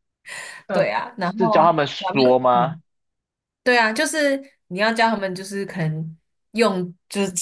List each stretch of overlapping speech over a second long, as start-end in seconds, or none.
0.7-2.8